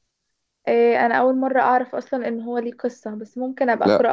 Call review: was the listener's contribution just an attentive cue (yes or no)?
no